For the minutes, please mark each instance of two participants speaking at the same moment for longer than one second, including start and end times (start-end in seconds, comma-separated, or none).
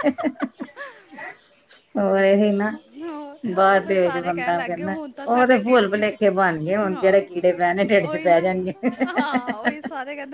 3.7-6.2